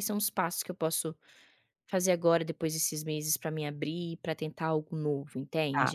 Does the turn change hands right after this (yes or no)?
yes